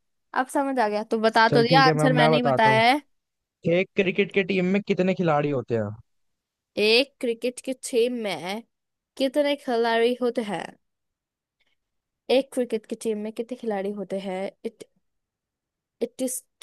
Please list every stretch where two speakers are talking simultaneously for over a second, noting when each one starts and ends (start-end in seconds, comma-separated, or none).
1.5-2.8